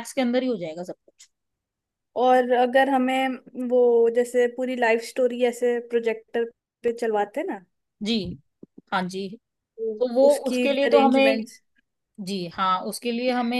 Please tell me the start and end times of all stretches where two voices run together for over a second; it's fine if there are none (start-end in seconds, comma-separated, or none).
10.0-11.4